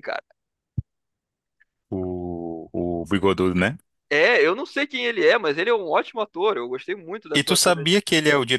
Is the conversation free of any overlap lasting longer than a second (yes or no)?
yes